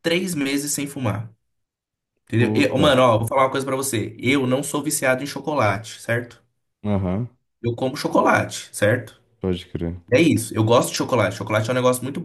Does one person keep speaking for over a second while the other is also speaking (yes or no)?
no